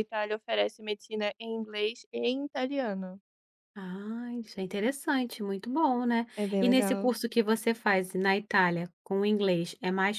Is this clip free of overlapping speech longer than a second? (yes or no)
yes